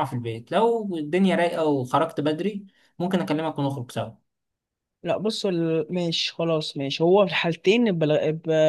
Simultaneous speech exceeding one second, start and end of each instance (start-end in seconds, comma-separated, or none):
none